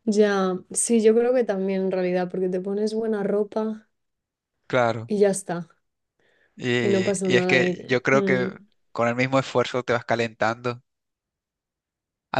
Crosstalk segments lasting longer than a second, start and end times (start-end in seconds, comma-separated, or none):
6.8-8.5